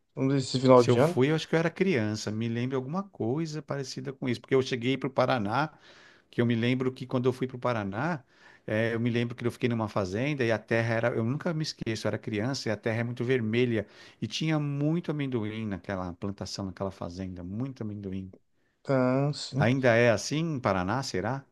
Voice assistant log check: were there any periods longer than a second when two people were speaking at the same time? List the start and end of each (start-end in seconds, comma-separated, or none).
none